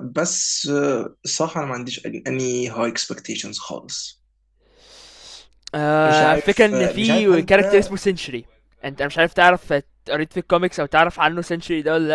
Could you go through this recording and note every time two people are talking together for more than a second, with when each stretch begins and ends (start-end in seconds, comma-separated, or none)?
6.1-8.0